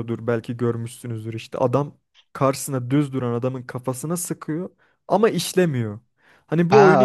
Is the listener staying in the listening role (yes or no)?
no